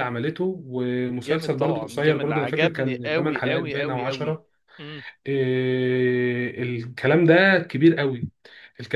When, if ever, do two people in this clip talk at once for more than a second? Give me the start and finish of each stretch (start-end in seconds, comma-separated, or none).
1.1-4.4